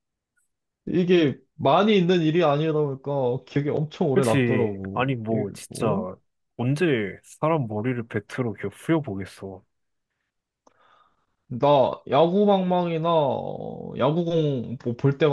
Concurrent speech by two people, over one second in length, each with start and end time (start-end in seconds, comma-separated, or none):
4.1-5.8